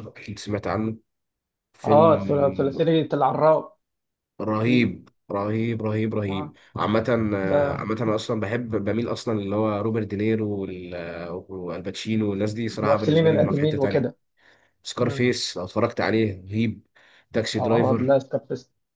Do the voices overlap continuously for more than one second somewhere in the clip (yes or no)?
yes